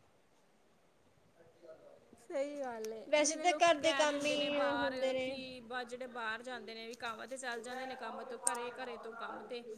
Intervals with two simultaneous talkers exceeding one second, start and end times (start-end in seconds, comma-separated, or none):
3.1-5.3